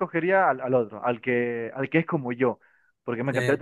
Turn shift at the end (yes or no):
no